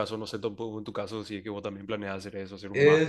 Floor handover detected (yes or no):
yes